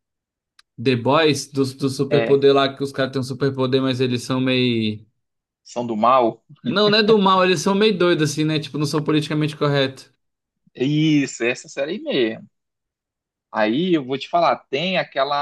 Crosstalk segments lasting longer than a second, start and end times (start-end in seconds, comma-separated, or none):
none